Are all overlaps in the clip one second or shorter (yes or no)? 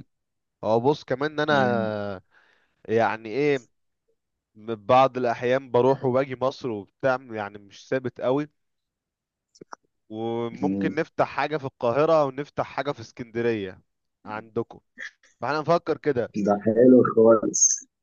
yes